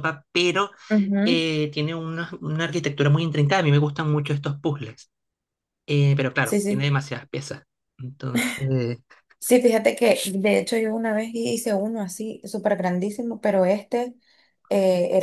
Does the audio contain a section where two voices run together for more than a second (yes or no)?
no